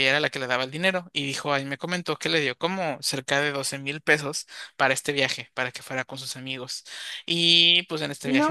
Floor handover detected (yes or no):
yes